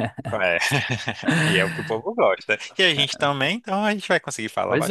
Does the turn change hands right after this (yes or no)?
yes